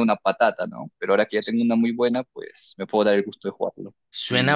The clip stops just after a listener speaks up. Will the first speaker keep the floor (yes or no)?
no